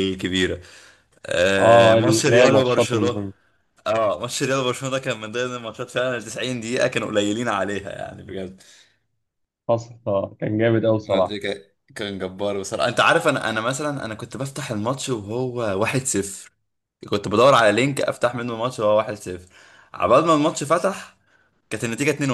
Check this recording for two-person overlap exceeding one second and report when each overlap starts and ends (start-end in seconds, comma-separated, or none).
1.6-3.2